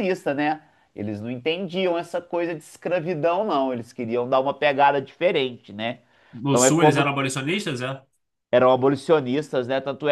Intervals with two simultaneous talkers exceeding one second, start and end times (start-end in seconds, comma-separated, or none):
none